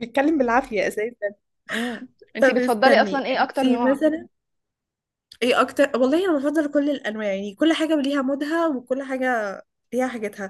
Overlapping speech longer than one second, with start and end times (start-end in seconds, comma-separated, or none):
2.4-4.0